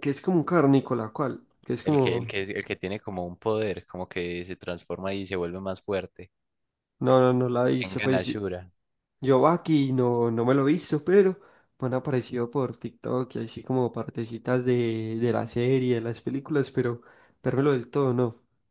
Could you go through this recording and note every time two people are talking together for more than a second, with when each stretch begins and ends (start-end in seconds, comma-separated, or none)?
none